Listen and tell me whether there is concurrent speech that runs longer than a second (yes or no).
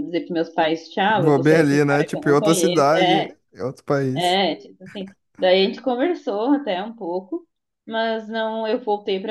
yes